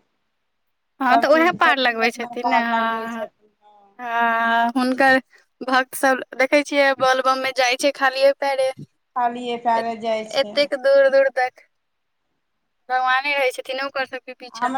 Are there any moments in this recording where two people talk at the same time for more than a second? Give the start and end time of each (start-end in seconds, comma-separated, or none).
1.0-3.2